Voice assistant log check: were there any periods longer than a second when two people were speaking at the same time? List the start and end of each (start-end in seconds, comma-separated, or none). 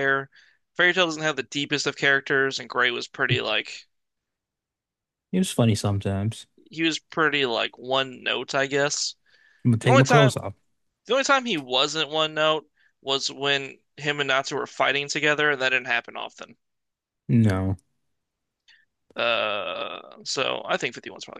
none